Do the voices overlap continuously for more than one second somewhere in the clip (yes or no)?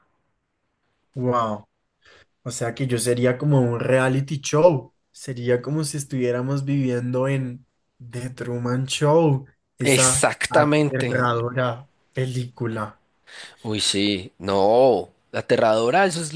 yes